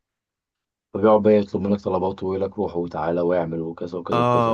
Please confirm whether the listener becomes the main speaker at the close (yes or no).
yes